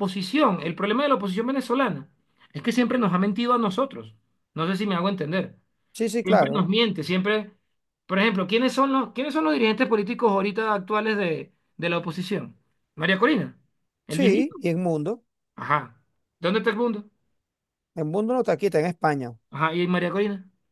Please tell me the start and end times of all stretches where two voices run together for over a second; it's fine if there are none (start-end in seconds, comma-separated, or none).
none